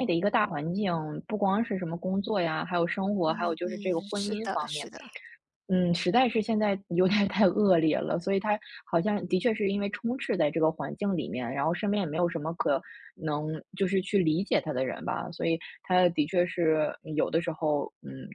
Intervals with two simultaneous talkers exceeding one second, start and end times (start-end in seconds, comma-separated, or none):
3.3-4.9